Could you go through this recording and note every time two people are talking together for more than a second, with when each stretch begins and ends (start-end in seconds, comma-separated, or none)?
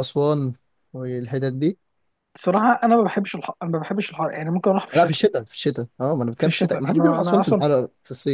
6.4-7.6